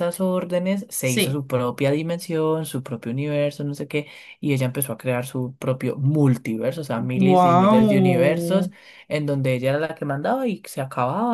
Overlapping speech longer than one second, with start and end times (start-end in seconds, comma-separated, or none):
7.2-8.7